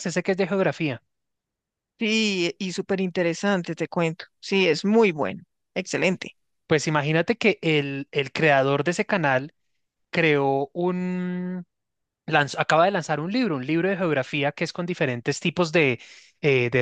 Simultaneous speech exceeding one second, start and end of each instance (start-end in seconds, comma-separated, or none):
none